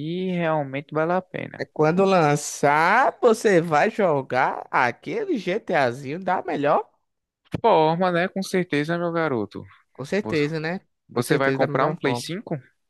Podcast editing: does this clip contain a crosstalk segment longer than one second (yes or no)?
yes